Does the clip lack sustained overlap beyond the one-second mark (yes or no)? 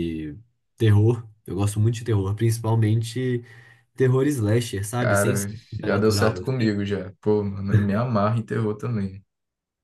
no